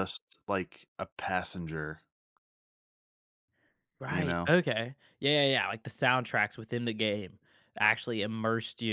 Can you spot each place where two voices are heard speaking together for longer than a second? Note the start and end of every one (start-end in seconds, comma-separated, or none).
none